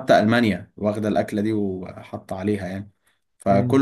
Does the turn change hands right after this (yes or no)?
no